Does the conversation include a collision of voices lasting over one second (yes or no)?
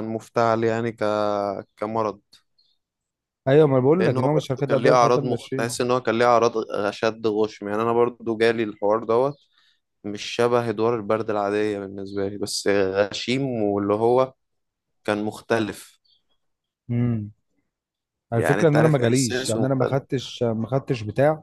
yes